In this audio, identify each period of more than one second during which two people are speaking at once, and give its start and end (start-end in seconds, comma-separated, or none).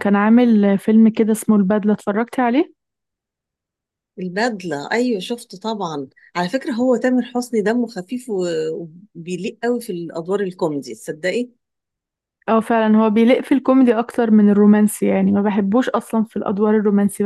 none